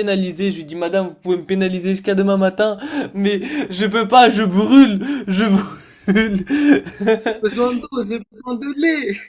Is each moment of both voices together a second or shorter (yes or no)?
yes